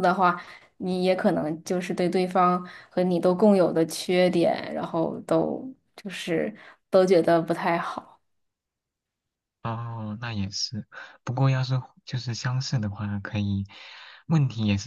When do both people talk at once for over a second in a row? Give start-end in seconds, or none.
none